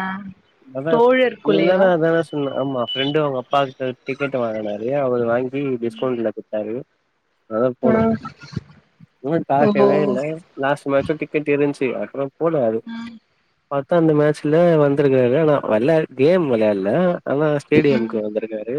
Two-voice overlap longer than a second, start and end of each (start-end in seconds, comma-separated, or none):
none